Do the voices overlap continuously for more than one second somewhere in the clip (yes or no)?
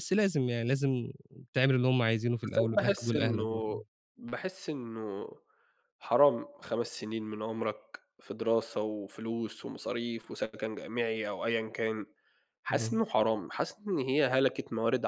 yes